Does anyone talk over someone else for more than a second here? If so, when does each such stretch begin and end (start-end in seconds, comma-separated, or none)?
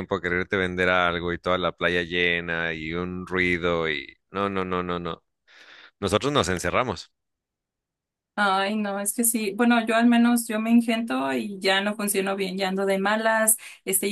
none